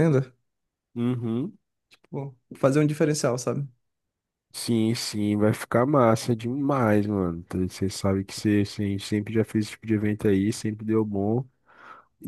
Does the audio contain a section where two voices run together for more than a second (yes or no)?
no